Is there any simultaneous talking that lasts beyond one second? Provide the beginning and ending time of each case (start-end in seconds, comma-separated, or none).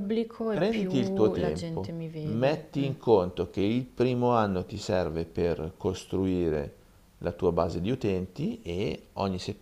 0.5-2.9